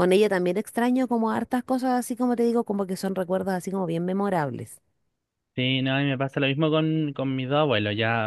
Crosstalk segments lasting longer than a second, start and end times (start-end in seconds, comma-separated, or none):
none